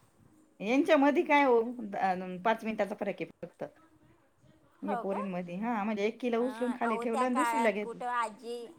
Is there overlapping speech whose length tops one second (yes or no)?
yes